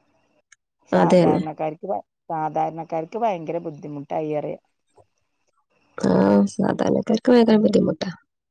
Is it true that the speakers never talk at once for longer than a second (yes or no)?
yes